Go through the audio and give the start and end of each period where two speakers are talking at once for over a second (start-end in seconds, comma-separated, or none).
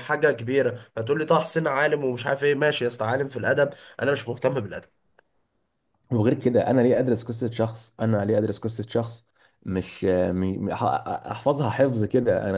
none